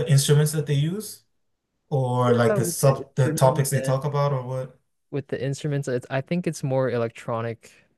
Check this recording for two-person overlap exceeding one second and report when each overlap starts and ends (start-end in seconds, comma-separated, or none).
2.2-3.9